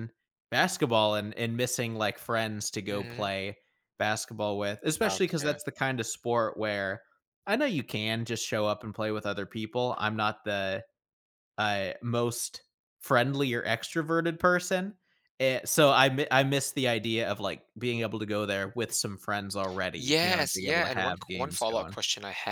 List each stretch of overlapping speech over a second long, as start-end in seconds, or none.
19.9-22.0